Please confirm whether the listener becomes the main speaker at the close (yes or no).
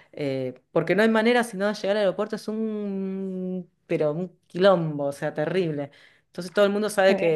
no